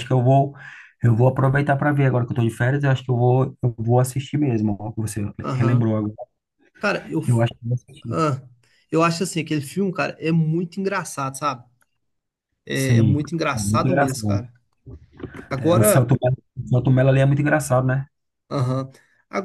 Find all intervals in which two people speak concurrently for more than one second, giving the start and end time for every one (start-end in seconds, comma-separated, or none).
12.7-14.5